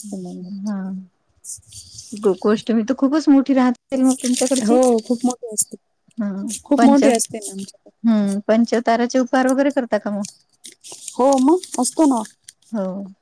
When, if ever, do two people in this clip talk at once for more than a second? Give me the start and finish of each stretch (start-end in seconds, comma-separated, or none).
6.6-7.9